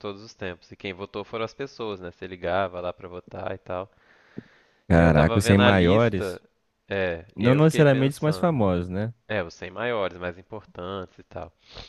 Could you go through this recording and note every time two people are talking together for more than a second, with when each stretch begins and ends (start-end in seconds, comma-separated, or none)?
4.9-6.4, 7.3-8.6